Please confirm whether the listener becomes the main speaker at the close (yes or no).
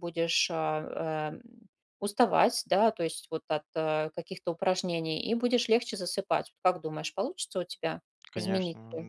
yes